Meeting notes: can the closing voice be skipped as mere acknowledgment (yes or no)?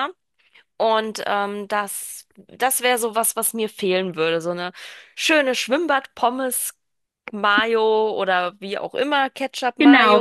no